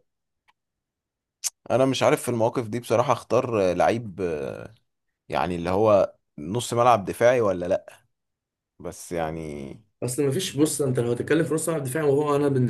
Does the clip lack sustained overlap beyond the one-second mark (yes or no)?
yes